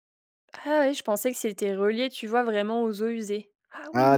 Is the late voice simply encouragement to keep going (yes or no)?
no